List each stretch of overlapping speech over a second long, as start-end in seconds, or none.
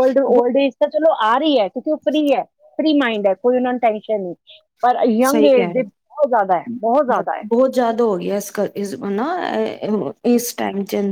none